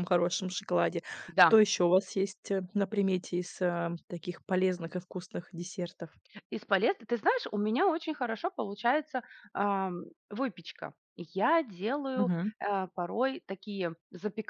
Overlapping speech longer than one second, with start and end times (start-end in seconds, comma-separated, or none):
none